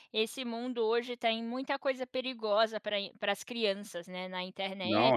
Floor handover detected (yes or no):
yes